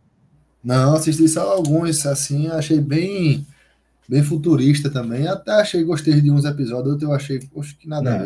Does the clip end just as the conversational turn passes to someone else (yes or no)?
yes